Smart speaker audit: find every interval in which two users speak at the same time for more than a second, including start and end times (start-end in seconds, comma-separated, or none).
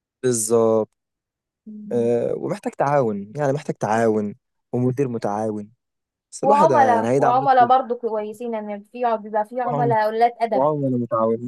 6.4-7.7